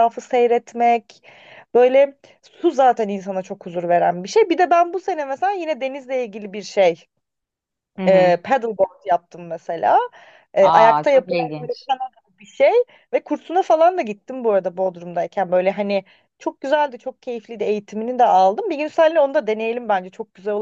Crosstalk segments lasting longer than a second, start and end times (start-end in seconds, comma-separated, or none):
10.6-11.9